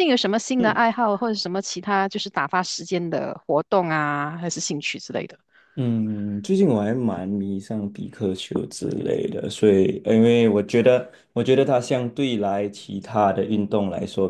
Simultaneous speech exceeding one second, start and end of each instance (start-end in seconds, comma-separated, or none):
none